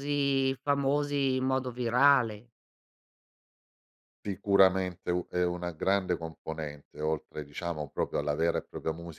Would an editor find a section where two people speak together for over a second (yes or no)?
no